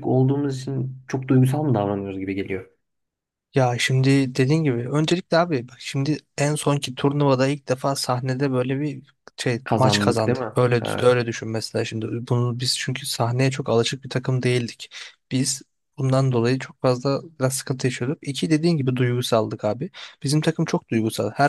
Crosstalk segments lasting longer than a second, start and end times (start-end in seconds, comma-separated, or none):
9.6-11.2